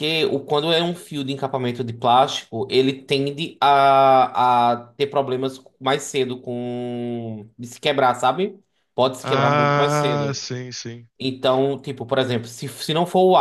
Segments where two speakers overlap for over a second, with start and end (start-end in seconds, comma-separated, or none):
9.2-10.4